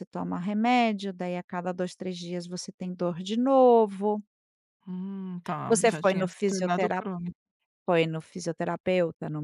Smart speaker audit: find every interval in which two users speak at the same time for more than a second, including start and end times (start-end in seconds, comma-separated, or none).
5.7-7.0